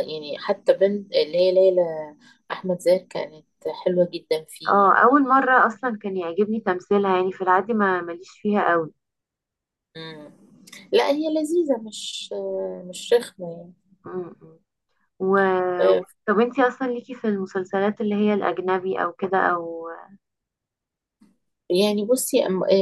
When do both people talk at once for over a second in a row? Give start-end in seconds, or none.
none